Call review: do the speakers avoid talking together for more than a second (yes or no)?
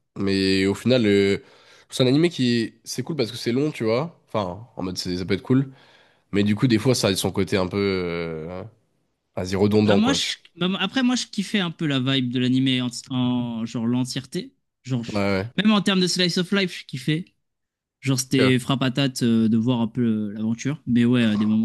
yes